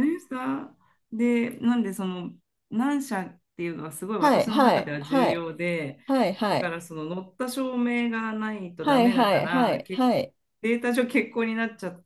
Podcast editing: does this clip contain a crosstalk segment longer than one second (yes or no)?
yes